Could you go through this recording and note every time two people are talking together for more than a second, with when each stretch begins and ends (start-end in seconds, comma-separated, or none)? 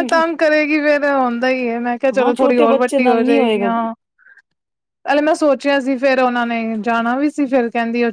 2.2-3.7